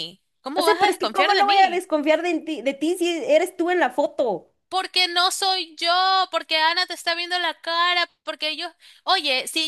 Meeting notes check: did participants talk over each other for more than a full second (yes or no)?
yes